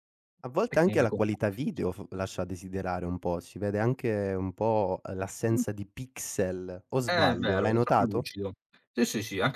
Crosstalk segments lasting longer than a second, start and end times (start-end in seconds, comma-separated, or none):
0.7-2.0, 7.1-8.3